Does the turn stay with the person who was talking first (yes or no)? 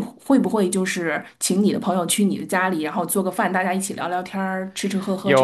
no